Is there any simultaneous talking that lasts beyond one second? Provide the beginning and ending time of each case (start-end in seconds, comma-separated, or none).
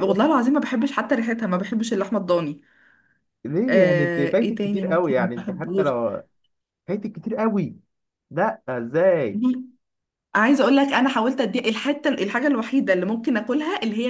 3.7-5.9